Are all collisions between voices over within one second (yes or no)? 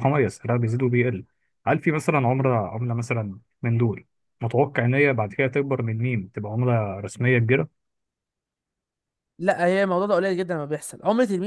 yes